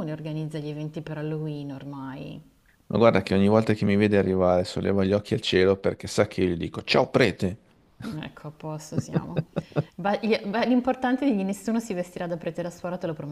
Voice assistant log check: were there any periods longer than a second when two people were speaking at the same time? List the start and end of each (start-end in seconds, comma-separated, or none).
none